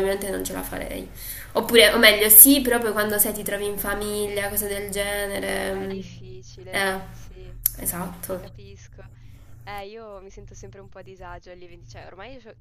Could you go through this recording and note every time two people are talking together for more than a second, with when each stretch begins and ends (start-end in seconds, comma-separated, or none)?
none